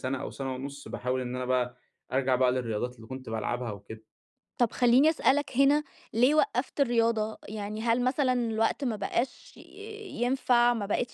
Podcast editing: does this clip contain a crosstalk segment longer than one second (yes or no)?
no